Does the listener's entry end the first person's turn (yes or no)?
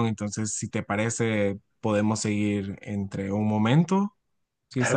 yes